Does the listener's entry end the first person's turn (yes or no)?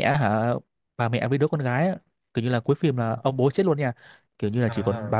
no